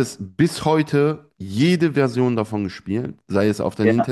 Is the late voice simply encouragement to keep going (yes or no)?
yes